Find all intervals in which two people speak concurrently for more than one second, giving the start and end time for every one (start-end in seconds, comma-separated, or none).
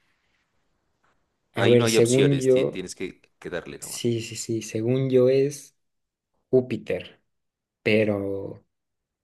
1.6-2.9